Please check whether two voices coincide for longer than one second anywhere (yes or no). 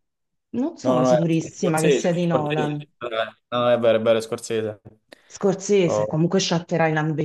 yes